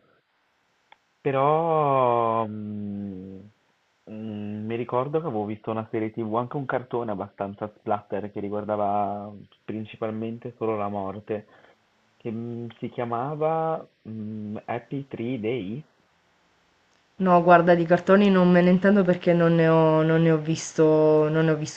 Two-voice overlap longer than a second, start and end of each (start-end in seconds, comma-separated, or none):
none